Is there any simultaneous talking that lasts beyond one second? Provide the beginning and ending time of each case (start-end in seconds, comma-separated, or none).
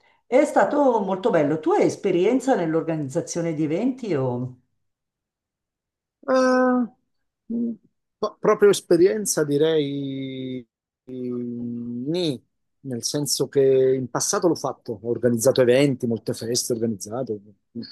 none